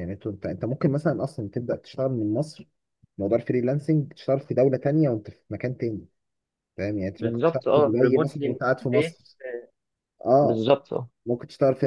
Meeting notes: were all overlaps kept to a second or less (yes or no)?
no